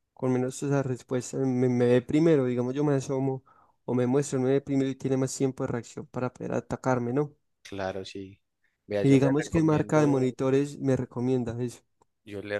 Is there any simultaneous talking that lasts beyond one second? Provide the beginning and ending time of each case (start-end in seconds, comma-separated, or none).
9.0-10.3